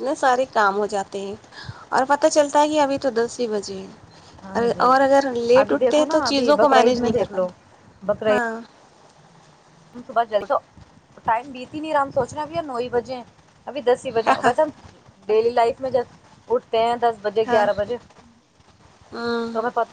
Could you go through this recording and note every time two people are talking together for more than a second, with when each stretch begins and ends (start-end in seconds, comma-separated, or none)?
5.6-7.5